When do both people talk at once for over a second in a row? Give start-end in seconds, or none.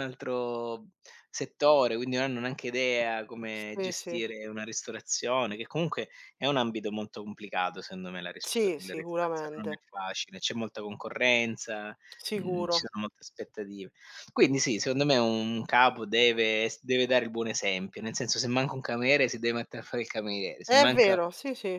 8.4-9.8